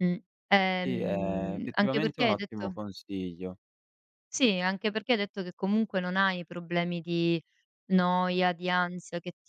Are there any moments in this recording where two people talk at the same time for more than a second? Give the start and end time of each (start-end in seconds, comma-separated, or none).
0.8-2.8